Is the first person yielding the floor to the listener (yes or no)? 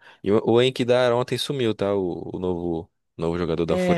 yes